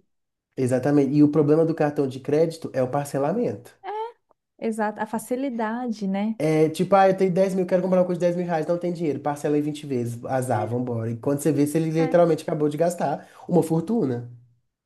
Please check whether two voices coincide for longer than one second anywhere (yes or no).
no